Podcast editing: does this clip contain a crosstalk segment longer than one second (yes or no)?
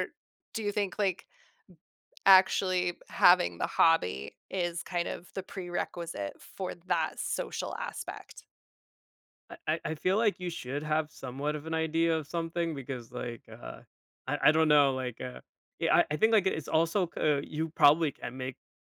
no